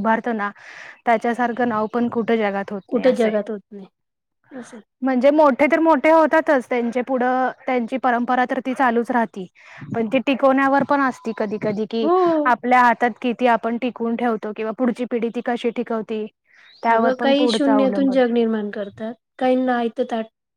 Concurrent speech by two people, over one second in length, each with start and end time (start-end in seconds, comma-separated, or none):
none